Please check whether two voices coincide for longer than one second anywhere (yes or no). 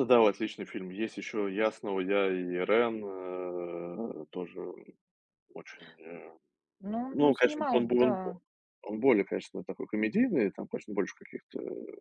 yes